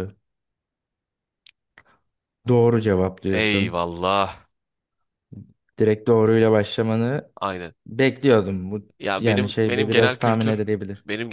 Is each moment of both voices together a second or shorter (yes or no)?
no